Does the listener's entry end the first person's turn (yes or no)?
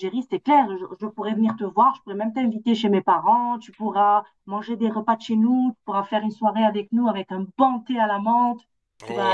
yes